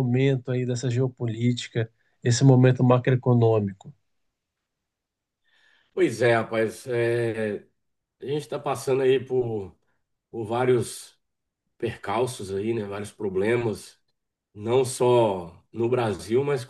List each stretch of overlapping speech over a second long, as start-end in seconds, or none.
none